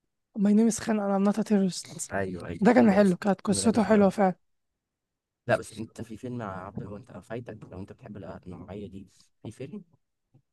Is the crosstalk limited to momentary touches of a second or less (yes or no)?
no